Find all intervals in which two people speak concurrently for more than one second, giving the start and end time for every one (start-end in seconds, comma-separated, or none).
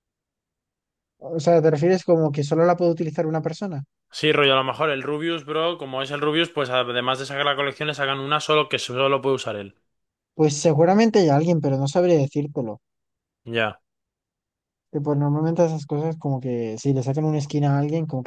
none